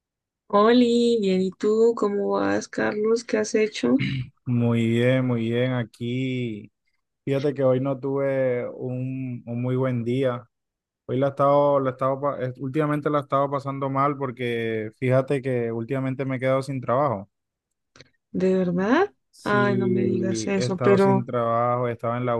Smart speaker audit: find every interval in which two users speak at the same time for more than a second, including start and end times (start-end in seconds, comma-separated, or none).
19.3-21.3